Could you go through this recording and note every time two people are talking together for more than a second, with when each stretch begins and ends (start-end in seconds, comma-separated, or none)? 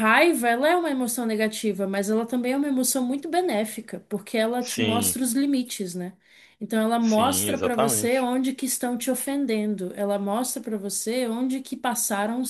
7.0-8.3